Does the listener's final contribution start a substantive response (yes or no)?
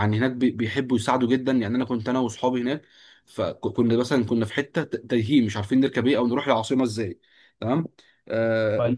no